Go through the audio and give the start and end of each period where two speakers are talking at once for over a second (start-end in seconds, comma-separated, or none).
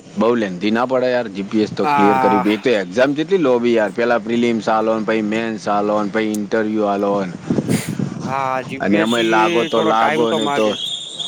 8.8-10.7